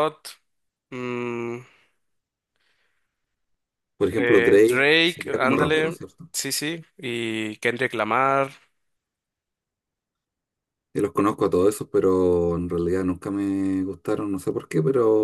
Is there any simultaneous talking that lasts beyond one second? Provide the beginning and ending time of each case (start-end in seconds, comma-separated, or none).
4.1-6.3